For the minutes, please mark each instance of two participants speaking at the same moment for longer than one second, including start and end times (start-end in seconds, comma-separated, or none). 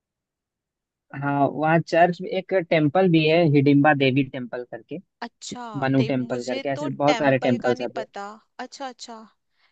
6.0-7.9